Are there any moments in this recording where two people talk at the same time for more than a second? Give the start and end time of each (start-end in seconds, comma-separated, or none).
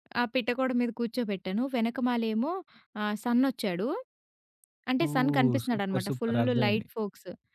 5.0-6.9